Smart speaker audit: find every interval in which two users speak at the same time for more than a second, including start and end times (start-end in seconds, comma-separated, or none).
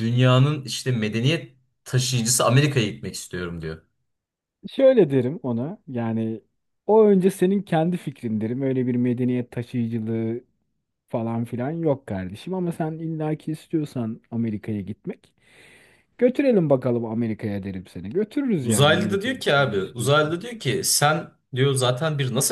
18.6-20.3